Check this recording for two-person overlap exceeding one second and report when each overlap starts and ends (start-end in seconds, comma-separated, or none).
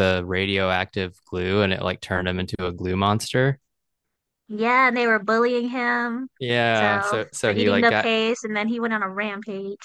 6.7-8.1